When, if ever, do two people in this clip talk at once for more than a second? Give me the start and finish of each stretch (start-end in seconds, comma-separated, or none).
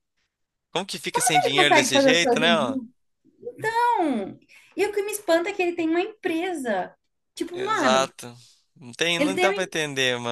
1.4-2.8